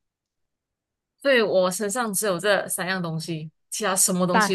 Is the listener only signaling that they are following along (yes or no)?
no